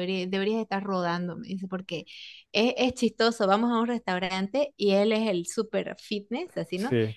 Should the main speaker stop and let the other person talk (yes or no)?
no